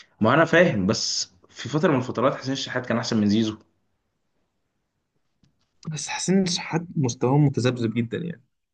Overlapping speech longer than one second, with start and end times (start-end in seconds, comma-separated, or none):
none